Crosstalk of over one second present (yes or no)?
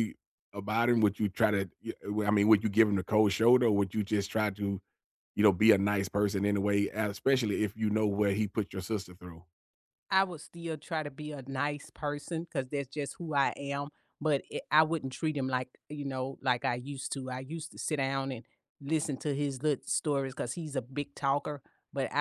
no